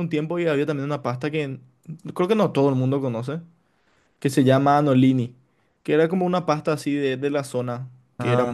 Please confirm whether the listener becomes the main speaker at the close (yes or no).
no